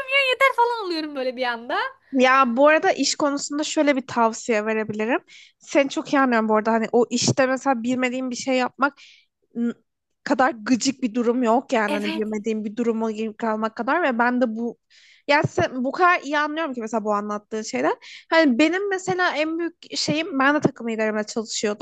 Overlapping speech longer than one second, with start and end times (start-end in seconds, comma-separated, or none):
none